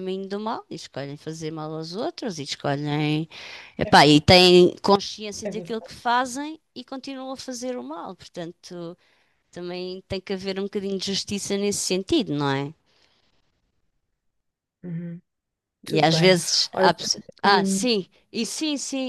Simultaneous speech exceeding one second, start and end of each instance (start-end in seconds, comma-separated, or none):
15.9-17.9